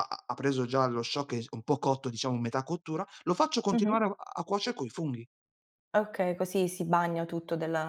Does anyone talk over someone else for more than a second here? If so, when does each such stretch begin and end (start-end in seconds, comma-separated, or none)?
none